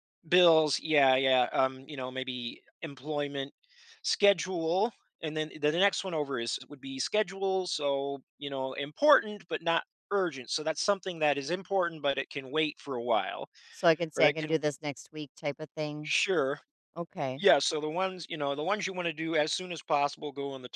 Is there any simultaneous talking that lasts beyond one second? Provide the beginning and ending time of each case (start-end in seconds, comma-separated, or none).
none